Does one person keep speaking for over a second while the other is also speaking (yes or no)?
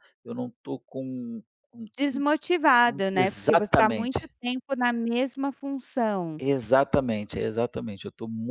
yes